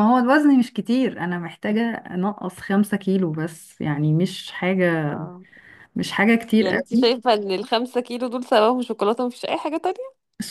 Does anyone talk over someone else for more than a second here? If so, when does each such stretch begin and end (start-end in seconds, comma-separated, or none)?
none